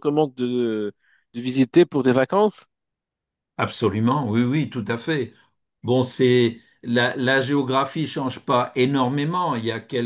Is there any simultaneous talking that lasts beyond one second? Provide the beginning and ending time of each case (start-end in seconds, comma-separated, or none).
none